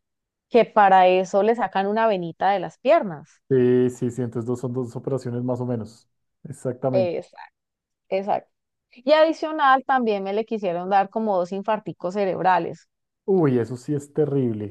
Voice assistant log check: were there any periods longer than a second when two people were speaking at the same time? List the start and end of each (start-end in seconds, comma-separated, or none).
none